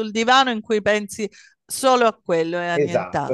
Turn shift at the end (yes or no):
yes